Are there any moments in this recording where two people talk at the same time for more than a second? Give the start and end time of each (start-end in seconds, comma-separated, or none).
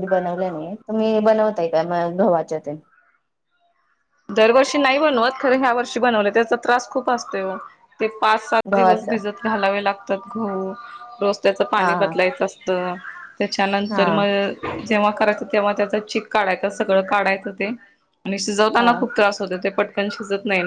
none